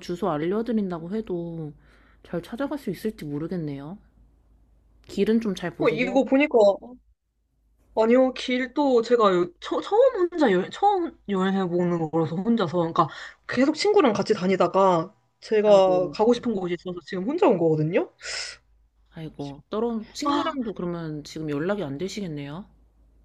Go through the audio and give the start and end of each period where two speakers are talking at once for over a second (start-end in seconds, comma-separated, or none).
none